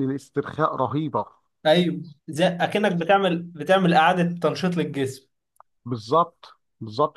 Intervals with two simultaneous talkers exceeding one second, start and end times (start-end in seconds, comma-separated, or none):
none